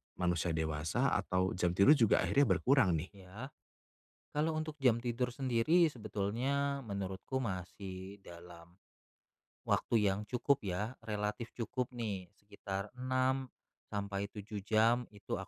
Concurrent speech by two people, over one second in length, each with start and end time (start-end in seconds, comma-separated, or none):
none